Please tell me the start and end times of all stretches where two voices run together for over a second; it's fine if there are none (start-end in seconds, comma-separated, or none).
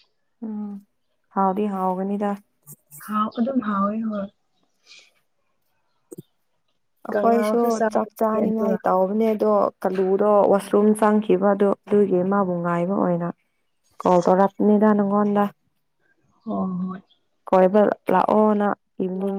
7.1-8.8